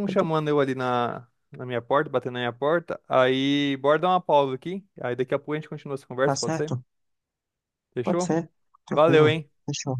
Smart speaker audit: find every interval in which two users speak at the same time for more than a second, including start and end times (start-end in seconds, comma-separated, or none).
none